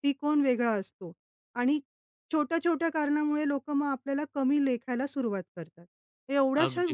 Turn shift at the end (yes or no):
no